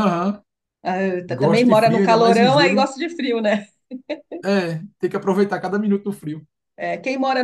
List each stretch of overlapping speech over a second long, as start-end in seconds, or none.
1.3-2.9